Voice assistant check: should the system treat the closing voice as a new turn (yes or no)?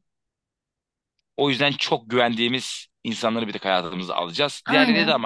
no